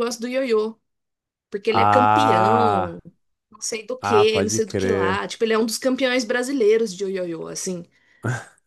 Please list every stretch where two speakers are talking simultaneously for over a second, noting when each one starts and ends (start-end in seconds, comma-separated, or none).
1.7-3.0, 4.0-5.3